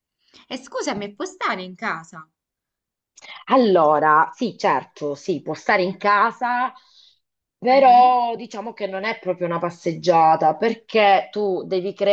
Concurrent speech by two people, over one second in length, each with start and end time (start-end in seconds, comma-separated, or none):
none